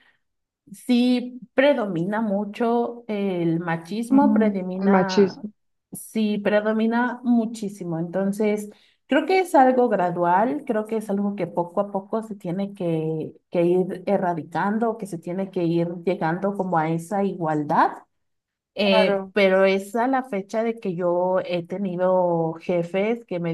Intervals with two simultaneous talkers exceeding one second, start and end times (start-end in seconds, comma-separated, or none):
4.1-5.5